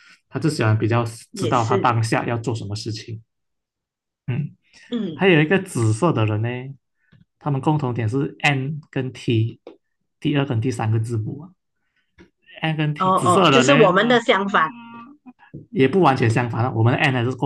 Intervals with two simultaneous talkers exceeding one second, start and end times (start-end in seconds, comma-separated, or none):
13.0-14.2